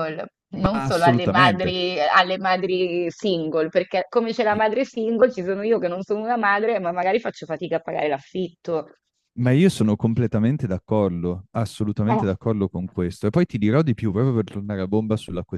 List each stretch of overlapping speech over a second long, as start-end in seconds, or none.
0.5-1.7